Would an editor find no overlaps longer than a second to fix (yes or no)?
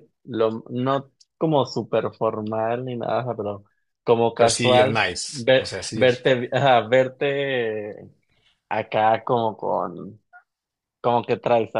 no